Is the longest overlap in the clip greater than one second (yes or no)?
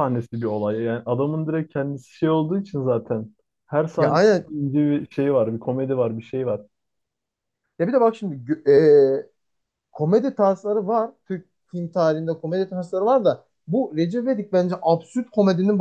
no